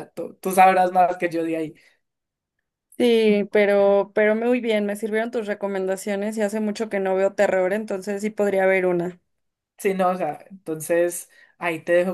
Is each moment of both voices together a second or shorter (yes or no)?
yes